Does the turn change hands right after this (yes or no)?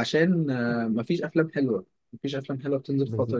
yes